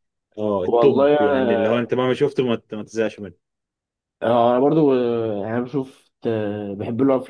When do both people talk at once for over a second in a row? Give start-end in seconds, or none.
0.6-1.9